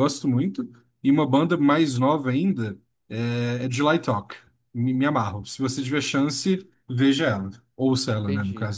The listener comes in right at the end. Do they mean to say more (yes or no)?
yes